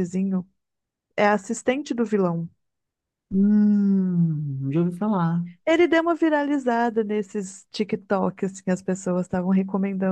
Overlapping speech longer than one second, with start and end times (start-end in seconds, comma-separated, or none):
none